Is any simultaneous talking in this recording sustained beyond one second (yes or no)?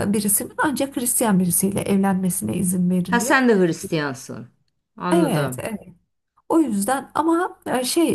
no